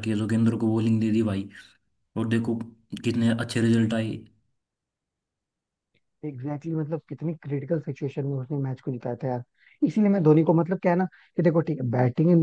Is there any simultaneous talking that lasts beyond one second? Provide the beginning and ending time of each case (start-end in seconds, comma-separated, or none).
none